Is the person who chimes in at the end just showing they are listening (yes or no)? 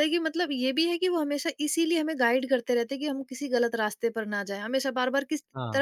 yes